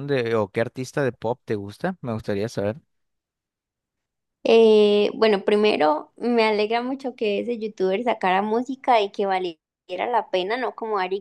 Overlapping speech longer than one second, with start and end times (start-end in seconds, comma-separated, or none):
none